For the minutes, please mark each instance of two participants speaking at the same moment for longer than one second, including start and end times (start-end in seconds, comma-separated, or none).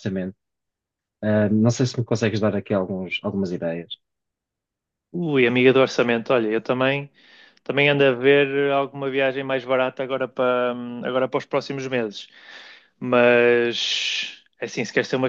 none